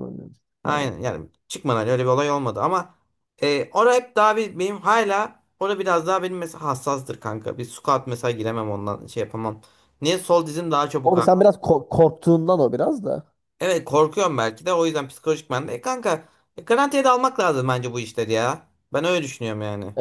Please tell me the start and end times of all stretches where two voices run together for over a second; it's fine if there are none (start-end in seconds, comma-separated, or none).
none